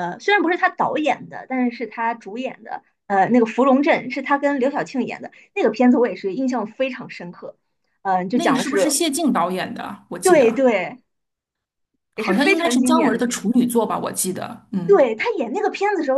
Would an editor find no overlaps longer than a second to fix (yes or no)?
no